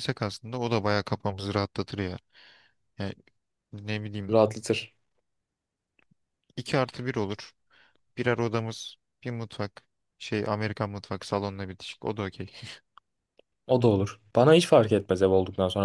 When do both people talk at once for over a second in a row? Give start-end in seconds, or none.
none